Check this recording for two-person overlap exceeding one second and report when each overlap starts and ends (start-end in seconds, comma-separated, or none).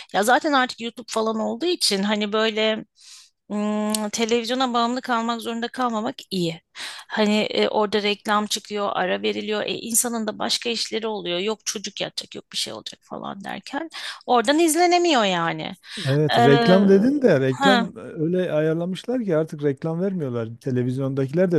none